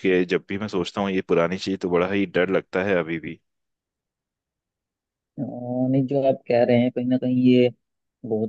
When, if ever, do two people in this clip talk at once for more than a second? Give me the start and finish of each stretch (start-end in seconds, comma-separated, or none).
none